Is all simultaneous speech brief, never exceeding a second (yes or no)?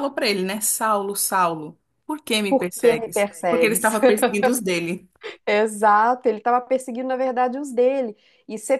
no